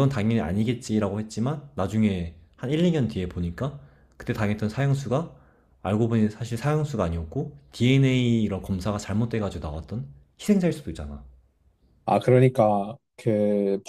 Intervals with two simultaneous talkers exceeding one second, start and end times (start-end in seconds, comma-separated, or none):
none